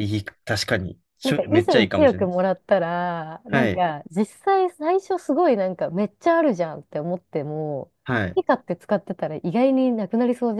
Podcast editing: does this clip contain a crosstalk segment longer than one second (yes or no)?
yes